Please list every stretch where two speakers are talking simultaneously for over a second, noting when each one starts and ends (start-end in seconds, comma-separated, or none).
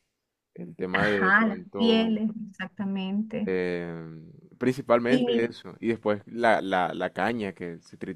0.9-2.2